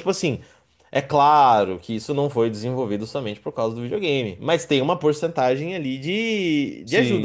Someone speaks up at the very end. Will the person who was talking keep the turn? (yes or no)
no